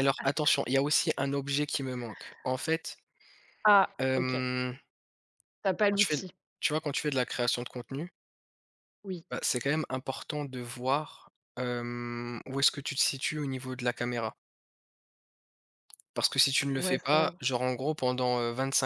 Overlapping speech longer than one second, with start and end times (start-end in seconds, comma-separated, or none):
none